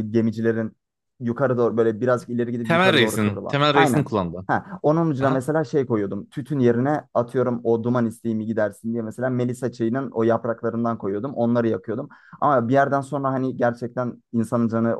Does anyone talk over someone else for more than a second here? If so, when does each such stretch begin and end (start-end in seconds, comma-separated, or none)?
2.7-4.1